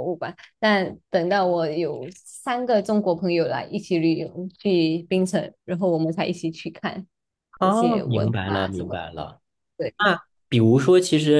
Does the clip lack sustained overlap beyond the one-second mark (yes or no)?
no